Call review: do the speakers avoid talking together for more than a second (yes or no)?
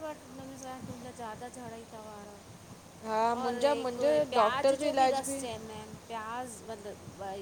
no